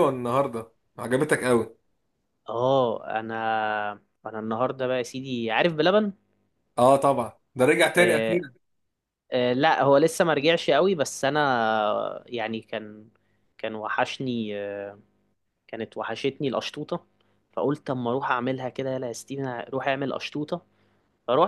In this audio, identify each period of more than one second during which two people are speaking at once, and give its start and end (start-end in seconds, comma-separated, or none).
none